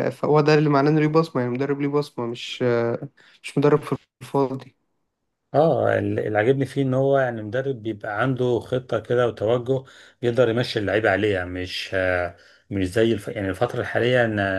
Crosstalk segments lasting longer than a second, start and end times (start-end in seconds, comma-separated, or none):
none